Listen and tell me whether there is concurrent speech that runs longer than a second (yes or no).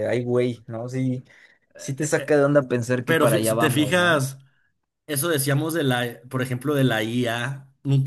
yes